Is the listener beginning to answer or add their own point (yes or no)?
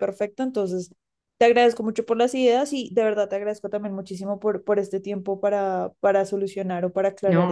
yes